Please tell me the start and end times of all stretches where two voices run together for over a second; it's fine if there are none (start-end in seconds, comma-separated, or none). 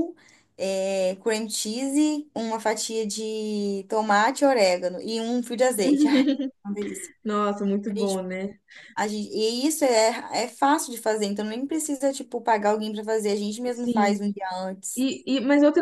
none